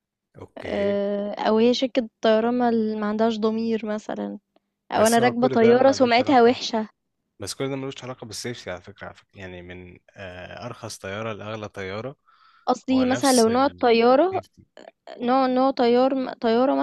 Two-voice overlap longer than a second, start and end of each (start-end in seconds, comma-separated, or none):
5.0-6.6, 12.9-14.4